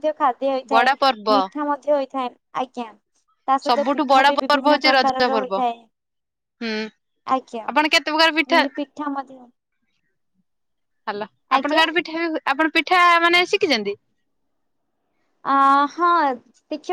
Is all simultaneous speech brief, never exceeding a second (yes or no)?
no